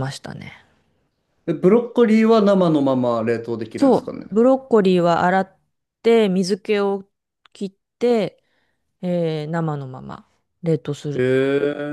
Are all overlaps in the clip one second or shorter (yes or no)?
yes